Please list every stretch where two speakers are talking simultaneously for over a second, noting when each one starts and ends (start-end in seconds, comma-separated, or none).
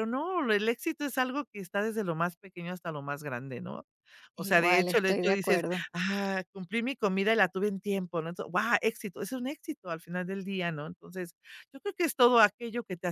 4.3-5.8